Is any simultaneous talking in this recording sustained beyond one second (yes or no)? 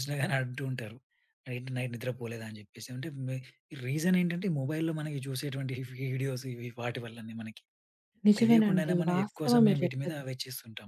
yes